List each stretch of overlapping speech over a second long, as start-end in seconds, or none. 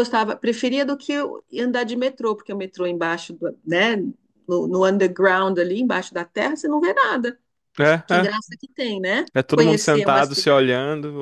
9.3-10.7